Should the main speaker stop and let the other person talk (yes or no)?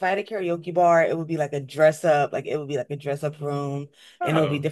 no